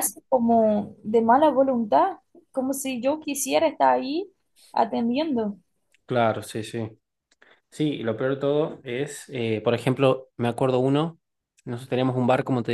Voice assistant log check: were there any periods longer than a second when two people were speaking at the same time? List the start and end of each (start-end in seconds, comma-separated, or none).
none